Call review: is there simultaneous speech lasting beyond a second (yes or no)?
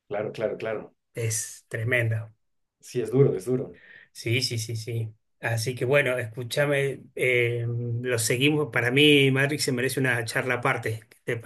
no